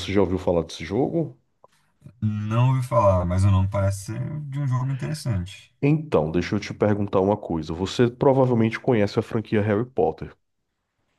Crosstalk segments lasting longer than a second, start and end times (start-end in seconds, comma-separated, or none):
none